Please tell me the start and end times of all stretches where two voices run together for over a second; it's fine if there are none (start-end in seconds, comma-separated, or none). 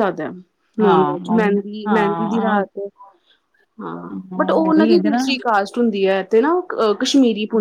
0.8-2.5